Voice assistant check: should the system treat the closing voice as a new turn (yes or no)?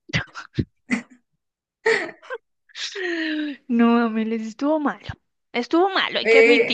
yes